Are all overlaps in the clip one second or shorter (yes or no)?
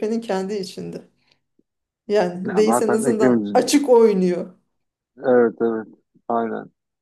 no